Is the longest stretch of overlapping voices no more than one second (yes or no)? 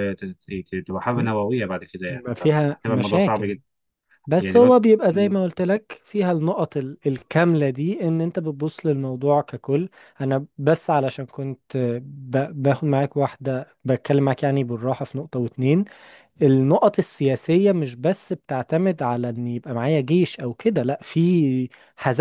no